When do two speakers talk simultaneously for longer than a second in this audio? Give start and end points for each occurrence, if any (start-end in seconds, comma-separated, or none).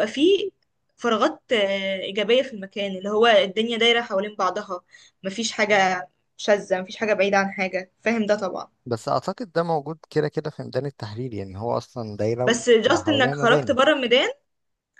12.4-13.8